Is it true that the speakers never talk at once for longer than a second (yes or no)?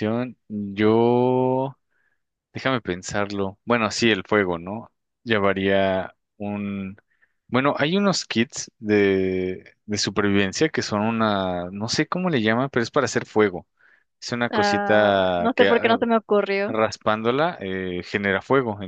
no